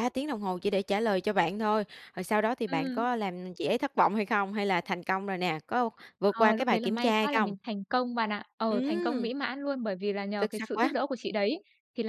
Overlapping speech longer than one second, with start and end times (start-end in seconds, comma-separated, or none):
6.3-7.5